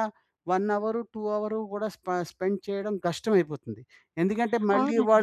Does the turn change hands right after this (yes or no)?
yes